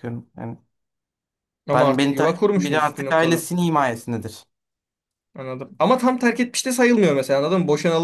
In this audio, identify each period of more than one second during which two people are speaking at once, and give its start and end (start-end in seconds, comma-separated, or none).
1.7-3.5